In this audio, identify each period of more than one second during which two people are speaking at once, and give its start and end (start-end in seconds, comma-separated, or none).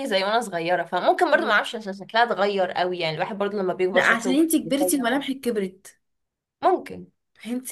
3.9-5.3